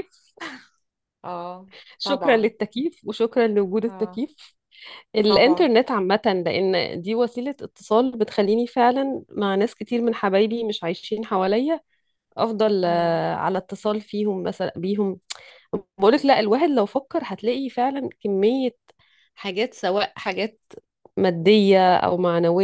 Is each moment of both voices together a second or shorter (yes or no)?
yes